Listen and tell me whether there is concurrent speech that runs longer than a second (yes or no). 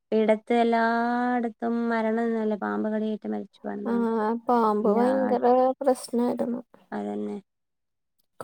no